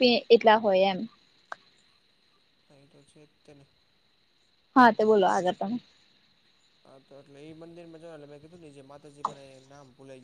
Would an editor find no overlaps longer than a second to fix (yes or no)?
yes